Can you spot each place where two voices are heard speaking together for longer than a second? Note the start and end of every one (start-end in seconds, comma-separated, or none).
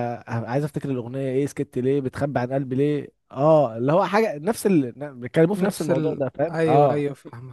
5.5-7.0